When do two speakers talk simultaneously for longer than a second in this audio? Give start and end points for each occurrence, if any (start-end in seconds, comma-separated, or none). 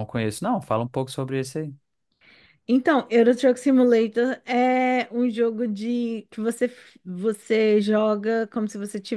none